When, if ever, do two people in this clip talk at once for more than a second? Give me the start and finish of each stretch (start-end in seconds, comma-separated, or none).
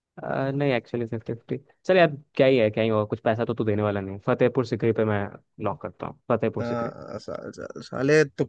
none